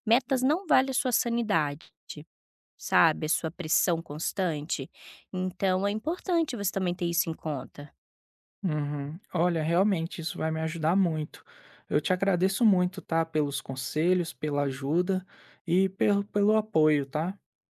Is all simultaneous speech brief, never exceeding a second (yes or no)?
yes